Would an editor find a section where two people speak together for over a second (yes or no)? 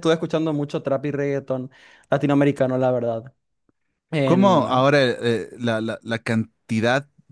no